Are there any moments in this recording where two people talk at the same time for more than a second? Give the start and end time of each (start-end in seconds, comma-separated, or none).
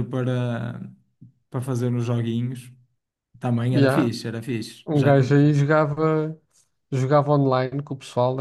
none